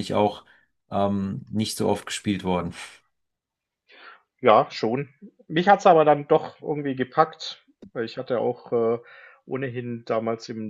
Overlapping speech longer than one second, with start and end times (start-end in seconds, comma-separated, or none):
none